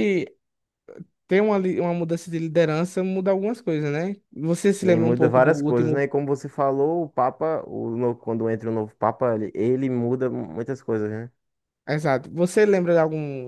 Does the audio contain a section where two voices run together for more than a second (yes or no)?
yes